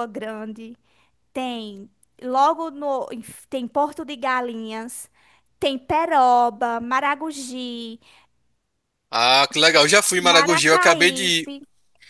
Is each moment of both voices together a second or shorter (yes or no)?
no